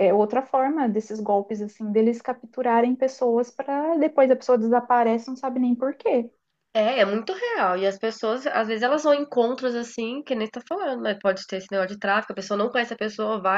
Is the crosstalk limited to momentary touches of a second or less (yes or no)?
yes